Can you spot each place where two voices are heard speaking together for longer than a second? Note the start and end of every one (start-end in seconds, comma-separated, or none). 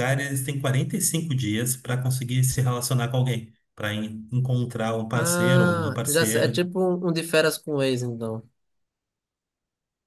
5.1-6.6